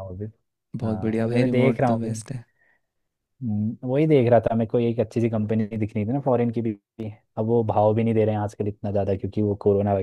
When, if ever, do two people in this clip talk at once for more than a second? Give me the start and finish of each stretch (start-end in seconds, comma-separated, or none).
0.8-2.2